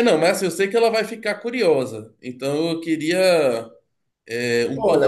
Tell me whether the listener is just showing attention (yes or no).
no